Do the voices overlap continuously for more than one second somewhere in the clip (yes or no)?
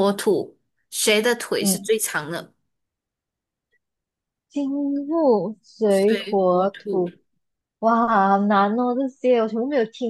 yes